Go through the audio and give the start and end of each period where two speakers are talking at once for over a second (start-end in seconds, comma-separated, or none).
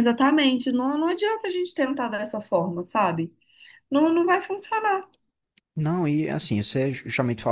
none